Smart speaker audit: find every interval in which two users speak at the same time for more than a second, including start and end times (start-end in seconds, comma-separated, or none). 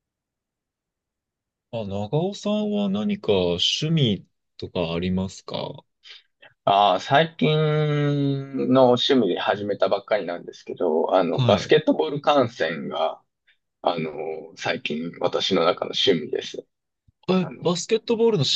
none